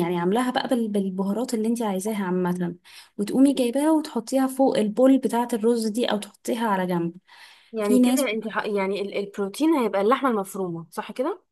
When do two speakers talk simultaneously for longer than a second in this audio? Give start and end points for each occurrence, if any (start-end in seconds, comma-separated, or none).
none